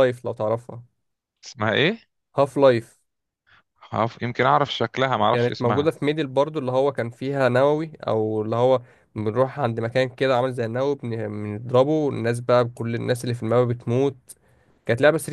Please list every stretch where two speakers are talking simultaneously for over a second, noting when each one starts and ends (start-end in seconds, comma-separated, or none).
none